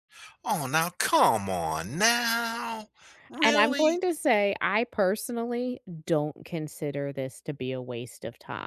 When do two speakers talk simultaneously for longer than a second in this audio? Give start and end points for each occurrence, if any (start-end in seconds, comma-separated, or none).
none